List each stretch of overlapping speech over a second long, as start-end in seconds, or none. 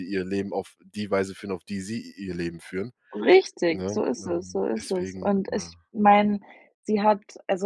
3.7-5.7